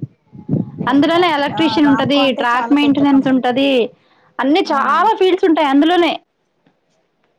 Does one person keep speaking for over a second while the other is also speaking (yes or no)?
yes